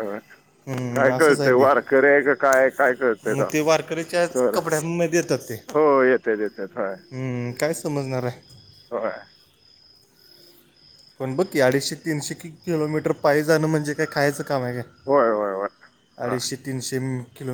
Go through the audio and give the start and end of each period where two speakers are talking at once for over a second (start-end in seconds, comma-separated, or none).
none